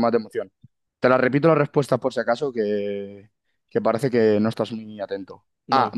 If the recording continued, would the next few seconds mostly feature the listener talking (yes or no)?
no